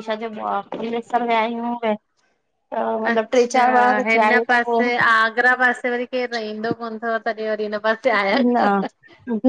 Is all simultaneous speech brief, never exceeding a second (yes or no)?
no